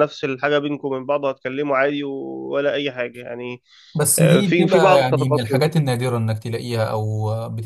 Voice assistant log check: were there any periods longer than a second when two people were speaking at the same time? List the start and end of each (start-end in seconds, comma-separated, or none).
4.2-5.7